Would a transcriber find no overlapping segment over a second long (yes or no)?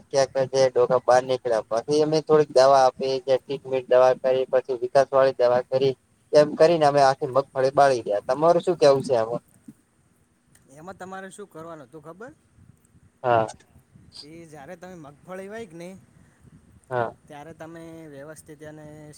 yes